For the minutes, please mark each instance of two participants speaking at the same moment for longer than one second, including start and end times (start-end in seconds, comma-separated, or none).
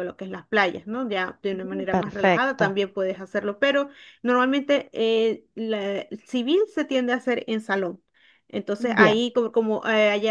1.5-2.8